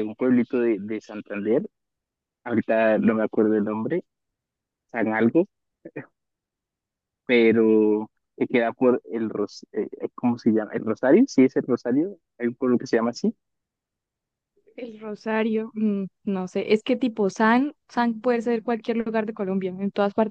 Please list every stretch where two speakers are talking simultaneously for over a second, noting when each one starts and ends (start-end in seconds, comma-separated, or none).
none